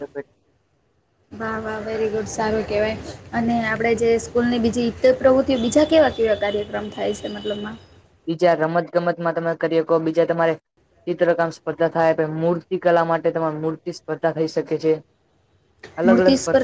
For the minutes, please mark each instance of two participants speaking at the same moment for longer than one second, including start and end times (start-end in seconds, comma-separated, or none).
none